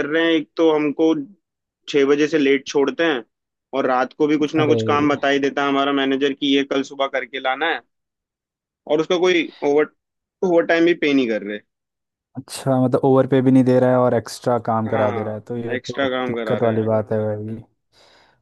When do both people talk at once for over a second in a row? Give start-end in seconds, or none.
14.9-16.9